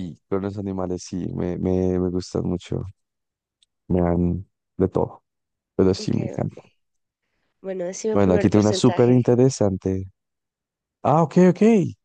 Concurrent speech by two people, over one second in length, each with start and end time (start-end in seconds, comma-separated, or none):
8.1-9.4